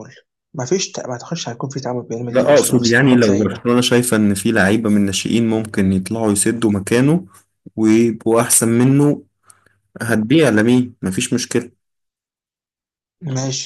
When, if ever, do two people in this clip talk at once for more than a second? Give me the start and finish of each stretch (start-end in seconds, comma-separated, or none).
2.3-3.6